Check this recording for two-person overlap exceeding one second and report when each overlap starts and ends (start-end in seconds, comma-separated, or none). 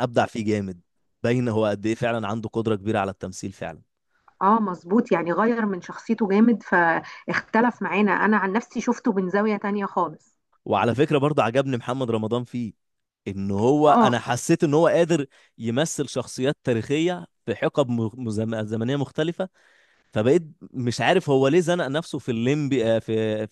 none